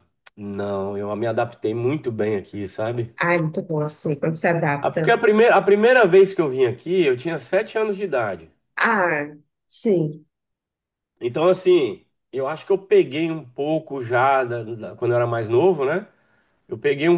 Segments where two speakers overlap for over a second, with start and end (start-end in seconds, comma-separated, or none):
none